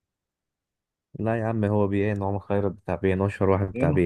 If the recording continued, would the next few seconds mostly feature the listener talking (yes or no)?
yes